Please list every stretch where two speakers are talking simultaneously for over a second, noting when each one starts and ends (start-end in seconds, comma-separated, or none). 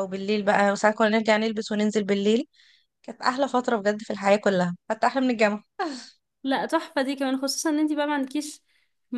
none